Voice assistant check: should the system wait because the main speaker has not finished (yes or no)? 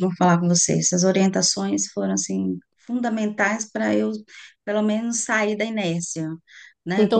no